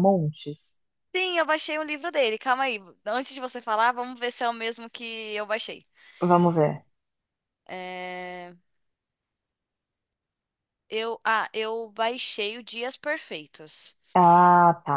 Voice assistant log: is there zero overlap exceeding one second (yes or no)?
yes